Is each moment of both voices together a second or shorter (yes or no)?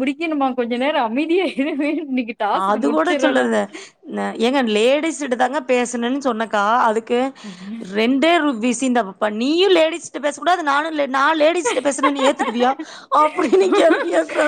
yes